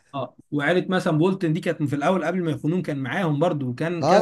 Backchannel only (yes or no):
no